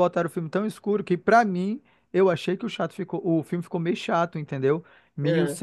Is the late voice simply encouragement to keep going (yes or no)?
yes